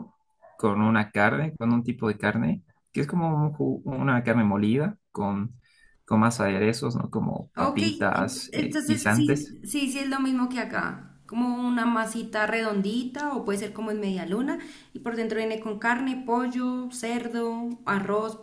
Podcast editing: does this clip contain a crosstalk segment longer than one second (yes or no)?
yes